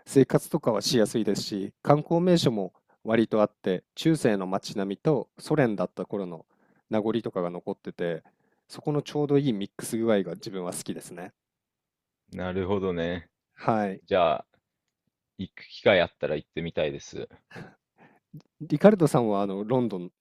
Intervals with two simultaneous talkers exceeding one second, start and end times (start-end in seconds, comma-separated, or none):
none